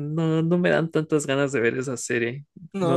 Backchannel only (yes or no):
no